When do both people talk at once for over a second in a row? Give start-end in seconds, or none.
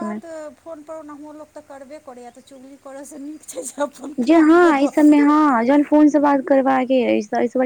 none